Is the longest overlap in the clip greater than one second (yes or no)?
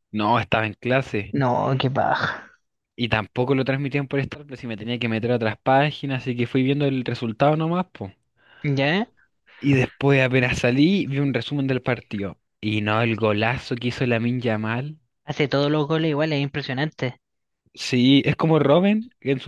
no